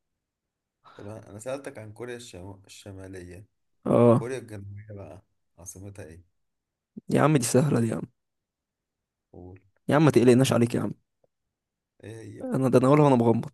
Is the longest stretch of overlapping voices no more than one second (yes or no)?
yes